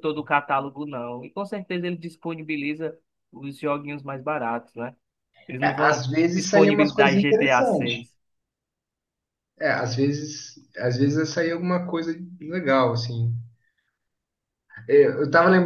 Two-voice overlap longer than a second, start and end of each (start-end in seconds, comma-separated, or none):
5.6-8.1